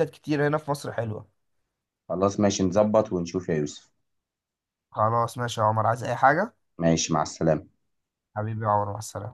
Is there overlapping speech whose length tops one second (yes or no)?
no